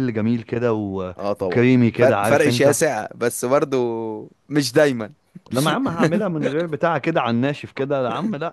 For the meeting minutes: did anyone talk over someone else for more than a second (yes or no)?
yes